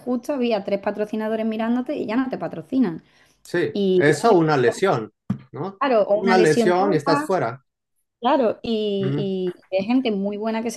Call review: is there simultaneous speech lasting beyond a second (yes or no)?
yes